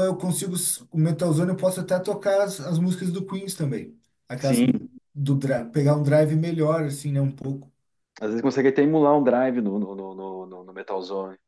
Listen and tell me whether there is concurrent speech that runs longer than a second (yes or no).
no